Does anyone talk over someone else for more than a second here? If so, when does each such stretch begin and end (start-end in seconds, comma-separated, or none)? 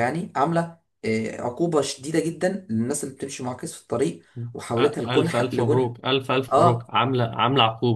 4.4-5.9